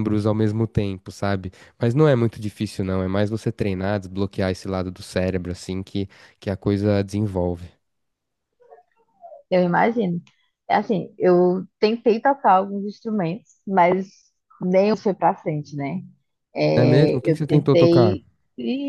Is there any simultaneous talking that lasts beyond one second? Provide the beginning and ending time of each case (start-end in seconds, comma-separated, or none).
16.8-18.2